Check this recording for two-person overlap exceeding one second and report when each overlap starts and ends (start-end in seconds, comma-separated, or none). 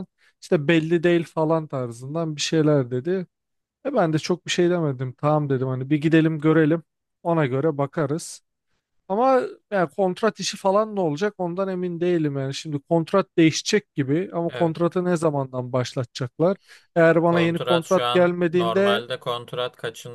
17.2-19.0